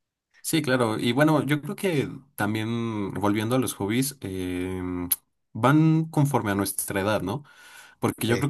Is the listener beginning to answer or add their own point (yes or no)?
no